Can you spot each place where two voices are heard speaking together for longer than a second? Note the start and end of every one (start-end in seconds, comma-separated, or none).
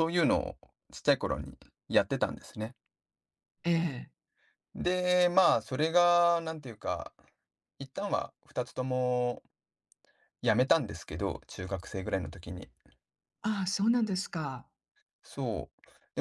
none